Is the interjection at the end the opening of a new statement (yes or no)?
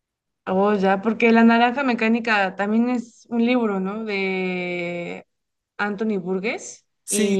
yes